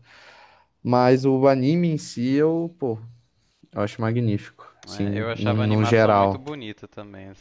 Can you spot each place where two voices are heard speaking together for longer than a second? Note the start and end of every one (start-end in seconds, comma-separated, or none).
5.1-6.4